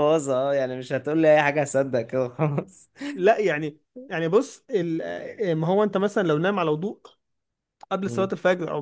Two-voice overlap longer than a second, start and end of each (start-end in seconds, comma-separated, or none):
none